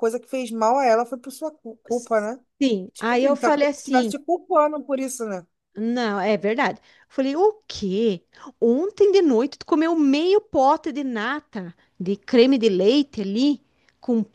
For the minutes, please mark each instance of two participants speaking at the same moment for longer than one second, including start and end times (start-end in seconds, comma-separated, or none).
2.9-4.1